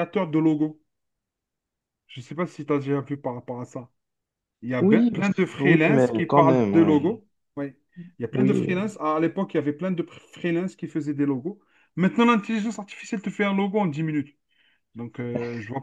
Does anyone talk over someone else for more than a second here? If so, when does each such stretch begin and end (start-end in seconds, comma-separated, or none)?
4.8-7.1